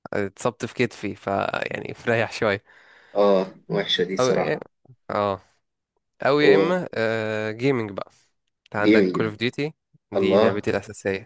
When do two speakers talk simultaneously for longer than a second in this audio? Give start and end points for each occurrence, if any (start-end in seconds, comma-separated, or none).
none